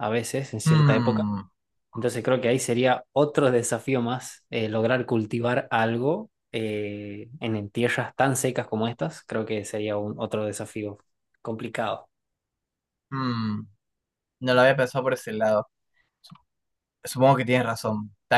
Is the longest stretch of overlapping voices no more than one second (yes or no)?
yes